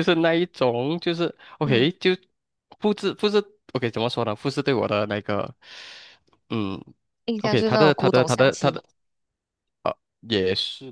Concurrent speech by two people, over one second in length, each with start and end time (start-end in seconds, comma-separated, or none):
7.4-8.8